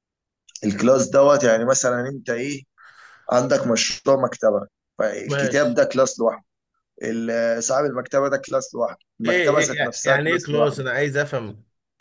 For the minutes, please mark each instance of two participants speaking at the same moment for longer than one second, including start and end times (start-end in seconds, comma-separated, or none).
9.3-10.8